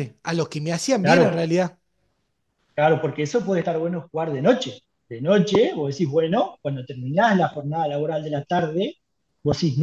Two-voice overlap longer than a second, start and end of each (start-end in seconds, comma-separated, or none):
none